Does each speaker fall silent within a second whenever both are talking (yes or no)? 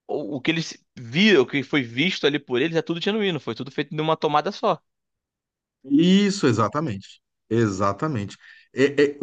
yes